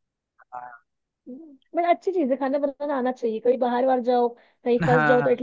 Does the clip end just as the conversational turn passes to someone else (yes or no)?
no